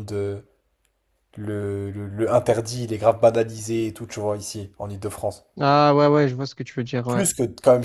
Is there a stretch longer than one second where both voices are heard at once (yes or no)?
no